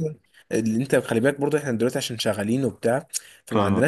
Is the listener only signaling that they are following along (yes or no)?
yes